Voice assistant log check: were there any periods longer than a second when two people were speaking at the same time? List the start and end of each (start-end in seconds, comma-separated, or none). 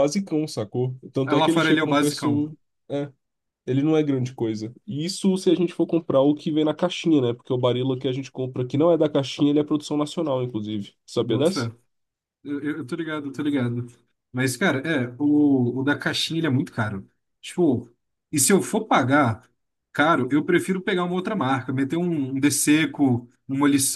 1.2-2.5